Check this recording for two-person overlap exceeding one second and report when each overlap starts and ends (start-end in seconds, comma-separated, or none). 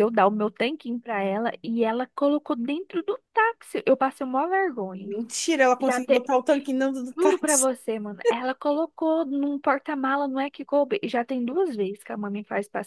none